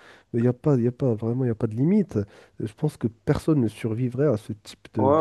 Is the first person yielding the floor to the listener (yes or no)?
yes